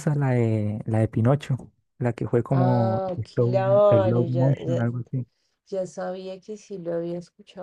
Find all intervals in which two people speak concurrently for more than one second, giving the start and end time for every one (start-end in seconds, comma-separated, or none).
2.5-4.8